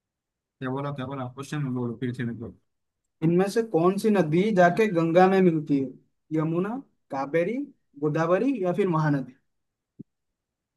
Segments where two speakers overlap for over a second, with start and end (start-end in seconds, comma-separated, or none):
none